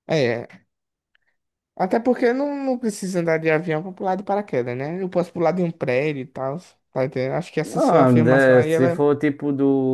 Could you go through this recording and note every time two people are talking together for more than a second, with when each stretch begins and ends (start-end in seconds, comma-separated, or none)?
7.8-9.0